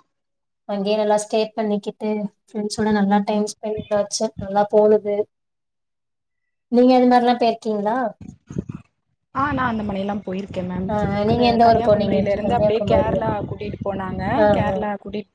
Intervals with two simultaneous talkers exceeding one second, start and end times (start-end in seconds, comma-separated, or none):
11.3-13.2